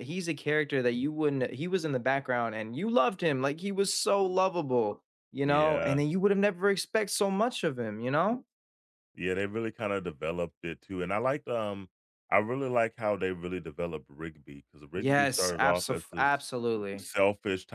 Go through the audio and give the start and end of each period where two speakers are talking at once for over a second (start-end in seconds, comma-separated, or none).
14.9-16.3